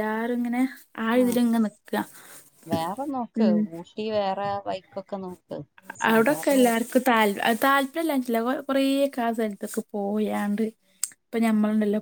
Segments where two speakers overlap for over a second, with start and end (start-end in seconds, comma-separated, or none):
none